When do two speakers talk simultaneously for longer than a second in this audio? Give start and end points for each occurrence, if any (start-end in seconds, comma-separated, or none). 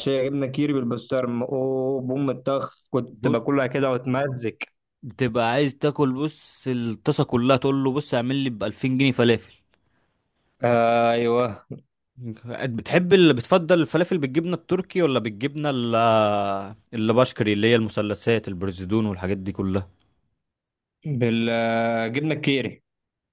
none